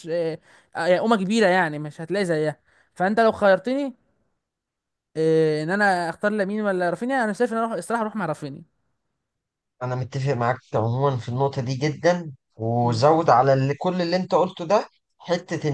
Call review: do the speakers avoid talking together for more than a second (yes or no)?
yes